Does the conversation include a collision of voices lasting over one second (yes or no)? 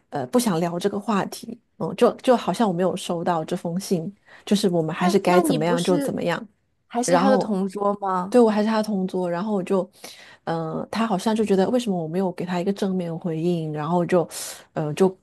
yes